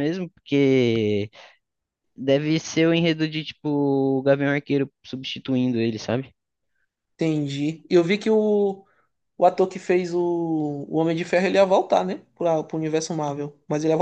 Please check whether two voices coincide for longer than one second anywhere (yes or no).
no